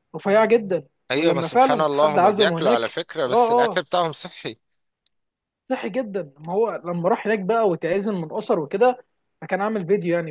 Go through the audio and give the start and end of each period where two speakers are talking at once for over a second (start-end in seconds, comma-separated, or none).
1.1-3.8